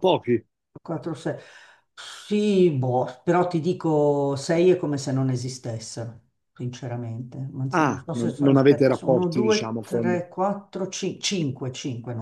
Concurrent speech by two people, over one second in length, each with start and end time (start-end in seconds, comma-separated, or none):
7.7-10.1